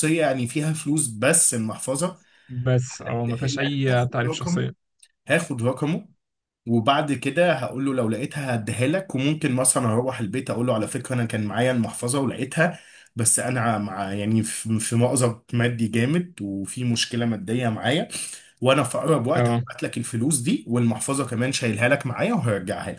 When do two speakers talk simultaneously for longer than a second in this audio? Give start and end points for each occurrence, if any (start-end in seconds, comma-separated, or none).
3.3-4.6